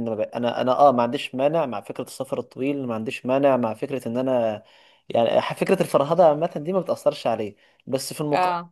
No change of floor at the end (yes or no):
yes